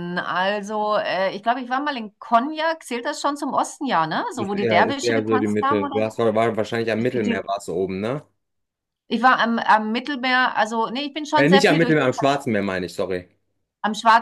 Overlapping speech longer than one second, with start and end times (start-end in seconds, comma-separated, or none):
4.3-6.2